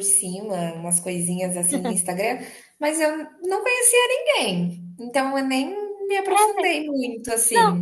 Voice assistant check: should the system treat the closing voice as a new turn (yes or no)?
yes